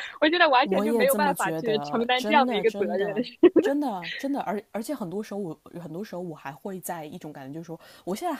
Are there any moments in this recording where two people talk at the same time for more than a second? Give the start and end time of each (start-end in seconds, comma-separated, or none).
0.6-3.1